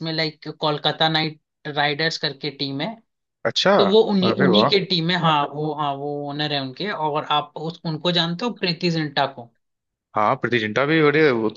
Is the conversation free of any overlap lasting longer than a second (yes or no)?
yes